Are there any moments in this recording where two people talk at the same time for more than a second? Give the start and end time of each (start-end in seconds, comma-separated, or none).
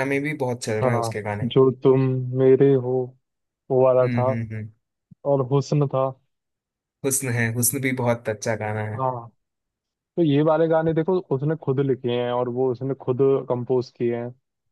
none